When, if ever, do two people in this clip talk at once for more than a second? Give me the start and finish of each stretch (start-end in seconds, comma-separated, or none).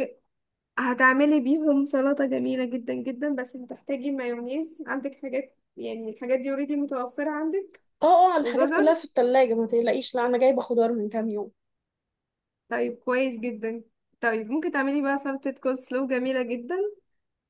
none